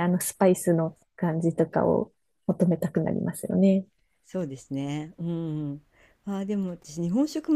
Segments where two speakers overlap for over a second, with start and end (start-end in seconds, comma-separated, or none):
none